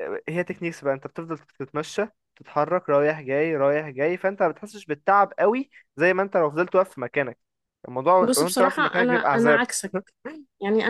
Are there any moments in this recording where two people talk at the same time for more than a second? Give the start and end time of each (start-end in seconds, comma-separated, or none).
8.2-9.6